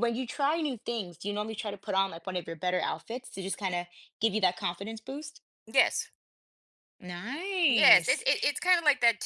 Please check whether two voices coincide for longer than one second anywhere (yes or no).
no